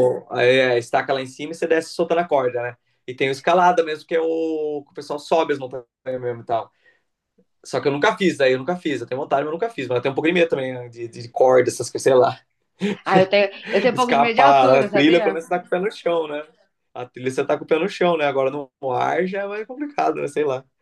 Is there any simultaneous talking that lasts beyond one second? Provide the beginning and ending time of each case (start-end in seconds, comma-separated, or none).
13.9-15.3